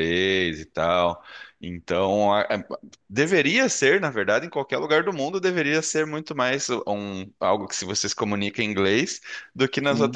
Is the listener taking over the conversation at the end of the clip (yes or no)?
no